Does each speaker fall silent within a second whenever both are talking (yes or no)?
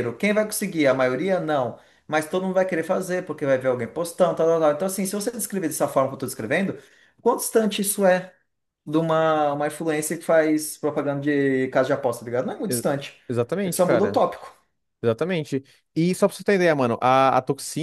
yes